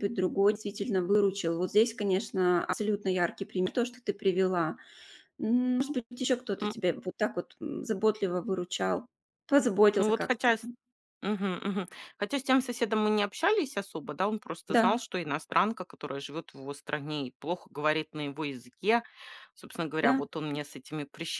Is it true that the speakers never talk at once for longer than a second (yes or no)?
yes